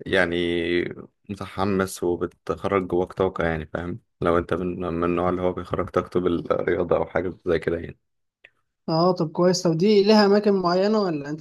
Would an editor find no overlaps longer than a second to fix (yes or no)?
yes